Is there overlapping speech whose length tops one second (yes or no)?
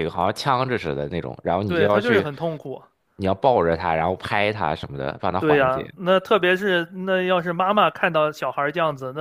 no